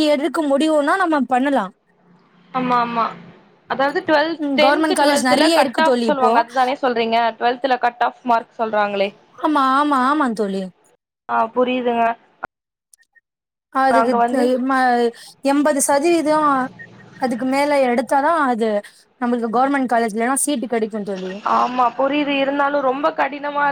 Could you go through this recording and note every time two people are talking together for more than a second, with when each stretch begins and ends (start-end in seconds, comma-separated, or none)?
4.4-6.3